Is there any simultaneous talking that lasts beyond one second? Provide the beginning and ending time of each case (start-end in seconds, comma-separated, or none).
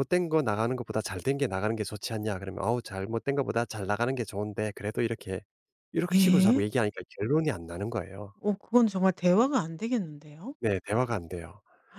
none